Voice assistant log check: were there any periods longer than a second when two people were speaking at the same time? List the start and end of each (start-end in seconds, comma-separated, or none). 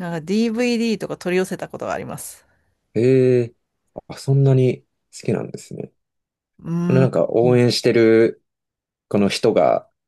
none